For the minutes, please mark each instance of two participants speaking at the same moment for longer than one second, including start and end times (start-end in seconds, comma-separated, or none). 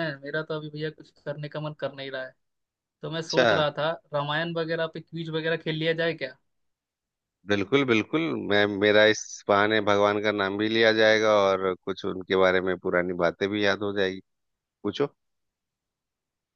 none